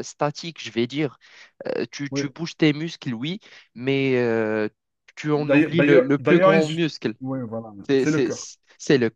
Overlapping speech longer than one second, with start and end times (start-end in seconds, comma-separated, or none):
5.3-7.1